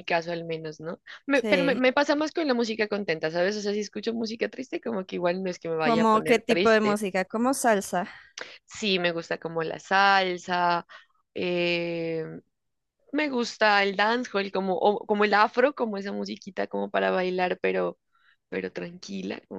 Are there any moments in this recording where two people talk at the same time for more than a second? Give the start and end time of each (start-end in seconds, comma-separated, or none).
5.8-7.0